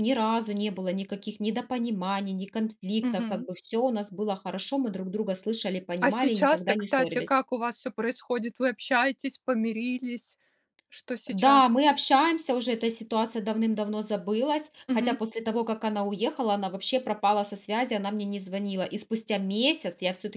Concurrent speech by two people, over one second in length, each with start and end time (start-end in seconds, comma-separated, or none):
6.0-7.3